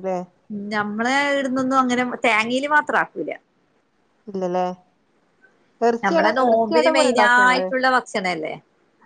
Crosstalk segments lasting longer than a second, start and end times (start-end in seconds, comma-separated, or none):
6.0-7.7